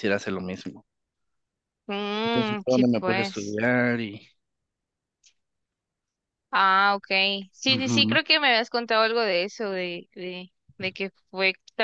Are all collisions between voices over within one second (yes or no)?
no